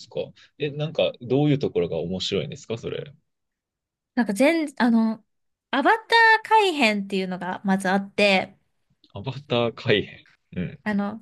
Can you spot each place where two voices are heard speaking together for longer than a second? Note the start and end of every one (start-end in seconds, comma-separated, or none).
none